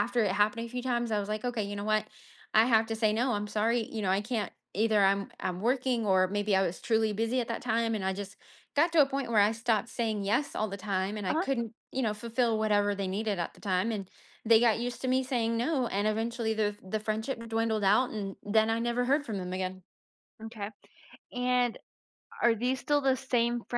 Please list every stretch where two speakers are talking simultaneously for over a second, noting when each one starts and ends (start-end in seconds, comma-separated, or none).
none